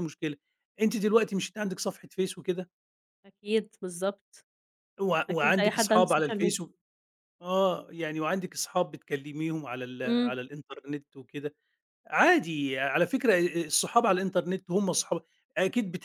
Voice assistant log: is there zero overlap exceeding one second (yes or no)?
no